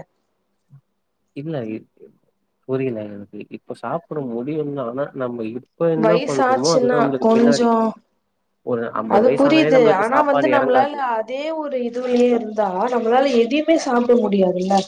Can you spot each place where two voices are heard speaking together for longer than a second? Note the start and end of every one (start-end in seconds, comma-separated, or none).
6.1-7.7